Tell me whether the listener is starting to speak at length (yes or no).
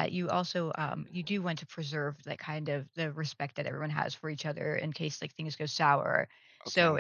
no